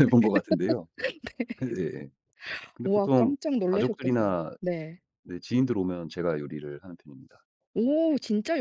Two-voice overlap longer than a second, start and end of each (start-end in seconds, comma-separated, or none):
2.9-4.5